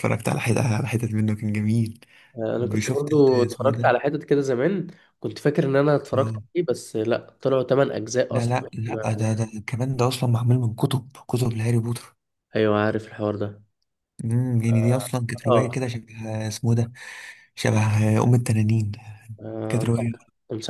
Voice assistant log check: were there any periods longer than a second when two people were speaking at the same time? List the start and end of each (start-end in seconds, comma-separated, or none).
2.6-4.0